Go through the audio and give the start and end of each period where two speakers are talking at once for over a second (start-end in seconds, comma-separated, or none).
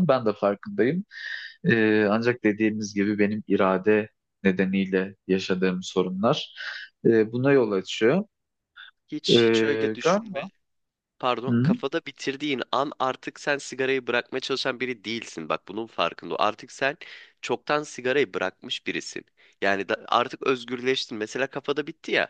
9.3-10.5